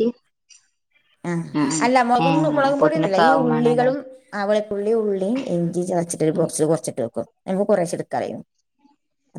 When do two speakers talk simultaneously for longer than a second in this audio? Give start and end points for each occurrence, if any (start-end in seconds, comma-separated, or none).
2.3-3.9